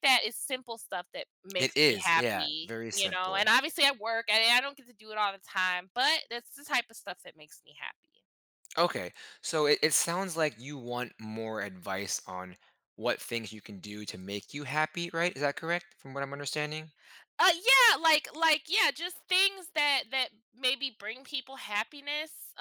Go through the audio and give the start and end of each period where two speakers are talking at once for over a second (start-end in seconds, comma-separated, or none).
1.6-3.5